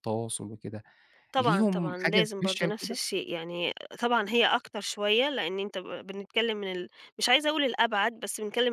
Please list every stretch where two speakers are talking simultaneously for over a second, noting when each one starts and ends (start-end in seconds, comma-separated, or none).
1.4-3.0